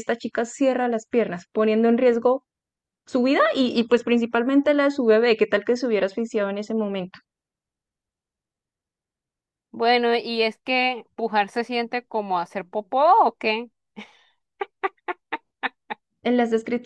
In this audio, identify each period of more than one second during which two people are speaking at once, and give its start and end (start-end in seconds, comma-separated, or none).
none